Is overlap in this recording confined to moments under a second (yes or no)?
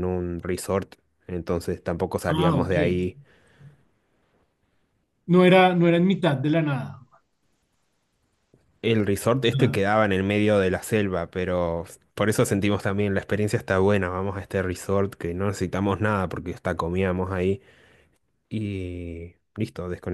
yes